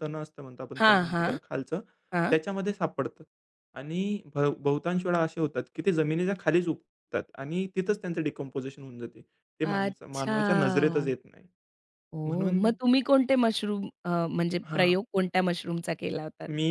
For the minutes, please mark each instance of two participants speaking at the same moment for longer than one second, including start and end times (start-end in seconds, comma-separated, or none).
9.7-11.1